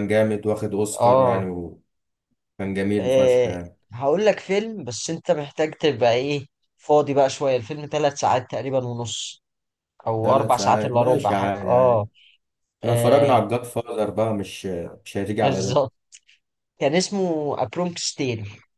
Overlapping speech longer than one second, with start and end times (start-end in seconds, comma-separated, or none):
10.2-12.1